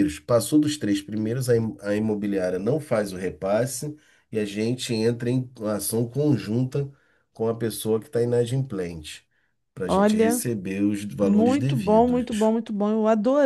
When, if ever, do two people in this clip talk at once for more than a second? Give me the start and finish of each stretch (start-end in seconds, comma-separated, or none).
11.2-12.5